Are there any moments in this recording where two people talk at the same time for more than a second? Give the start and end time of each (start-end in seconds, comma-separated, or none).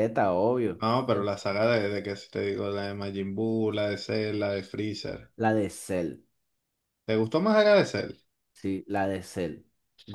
none